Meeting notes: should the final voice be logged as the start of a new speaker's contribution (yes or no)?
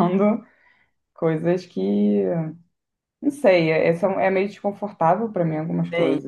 yes